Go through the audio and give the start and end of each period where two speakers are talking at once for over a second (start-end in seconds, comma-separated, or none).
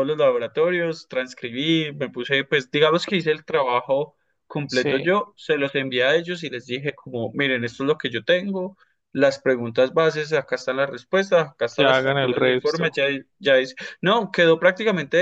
11.8-13.0